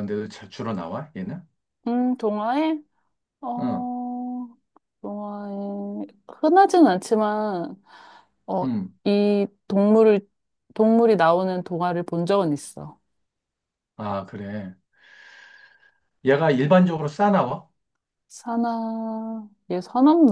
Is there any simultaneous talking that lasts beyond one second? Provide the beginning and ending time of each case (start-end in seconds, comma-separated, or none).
none